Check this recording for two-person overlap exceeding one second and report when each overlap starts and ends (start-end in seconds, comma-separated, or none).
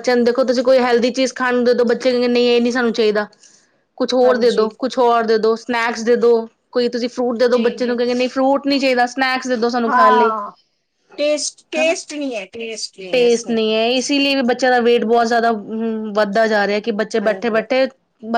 none